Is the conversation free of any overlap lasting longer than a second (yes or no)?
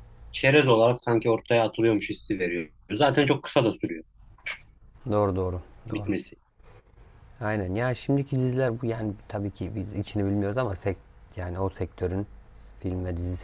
yes